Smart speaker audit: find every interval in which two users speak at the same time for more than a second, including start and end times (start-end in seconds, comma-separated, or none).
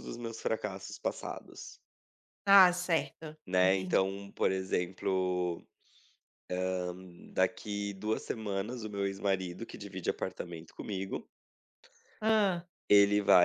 none